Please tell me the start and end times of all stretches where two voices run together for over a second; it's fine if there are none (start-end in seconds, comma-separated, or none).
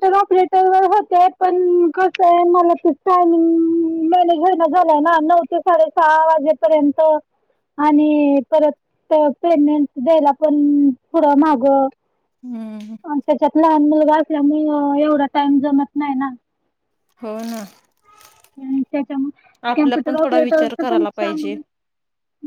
19.7-21.6